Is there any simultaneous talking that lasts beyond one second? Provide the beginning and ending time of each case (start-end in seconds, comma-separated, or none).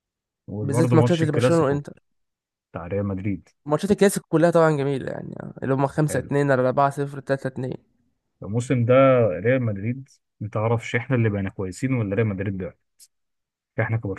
0.6-1.8